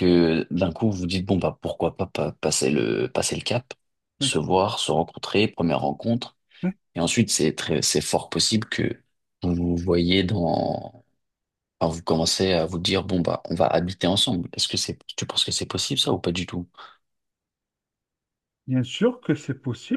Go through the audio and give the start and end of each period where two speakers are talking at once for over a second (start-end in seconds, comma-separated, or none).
none